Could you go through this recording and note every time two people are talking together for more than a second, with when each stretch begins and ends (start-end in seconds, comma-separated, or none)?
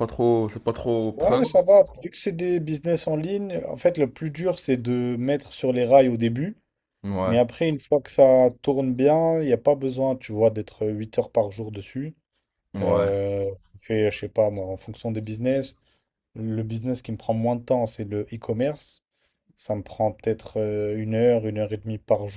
none